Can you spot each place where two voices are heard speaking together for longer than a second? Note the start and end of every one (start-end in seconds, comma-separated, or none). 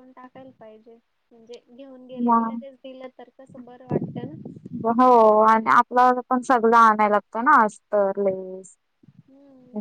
none